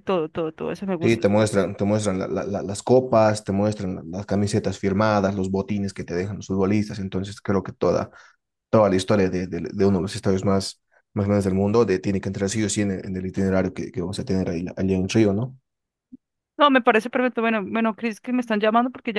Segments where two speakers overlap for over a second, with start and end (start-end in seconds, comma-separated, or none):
none